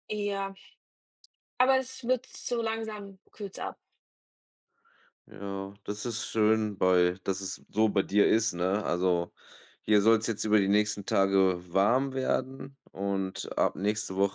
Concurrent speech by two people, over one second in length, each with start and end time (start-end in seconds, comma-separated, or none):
none